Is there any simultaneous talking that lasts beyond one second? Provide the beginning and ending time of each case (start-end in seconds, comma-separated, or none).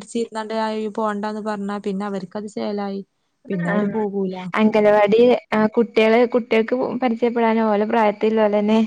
none